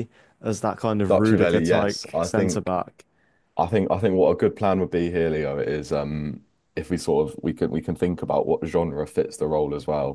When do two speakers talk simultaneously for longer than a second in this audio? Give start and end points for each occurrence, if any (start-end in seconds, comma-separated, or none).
1.1-2.7